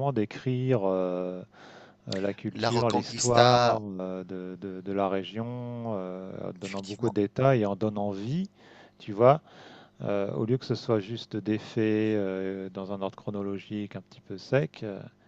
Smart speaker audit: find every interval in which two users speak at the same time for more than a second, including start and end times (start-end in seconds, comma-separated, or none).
2.5-3.8